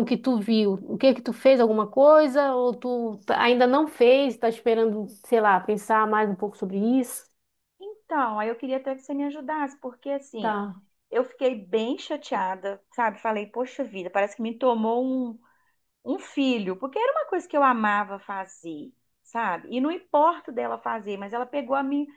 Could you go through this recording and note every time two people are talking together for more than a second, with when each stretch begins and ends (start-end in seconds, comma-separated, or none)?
none